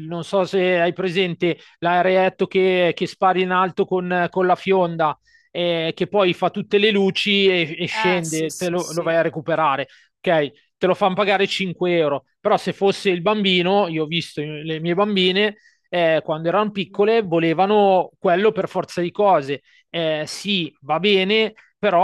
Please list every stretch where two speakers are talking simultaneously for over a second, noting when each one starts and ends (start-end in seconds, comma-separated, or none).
7.9-9.1